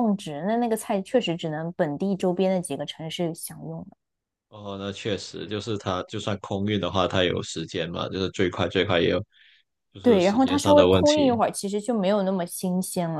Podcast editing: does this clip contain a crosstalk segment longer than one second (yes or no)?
yes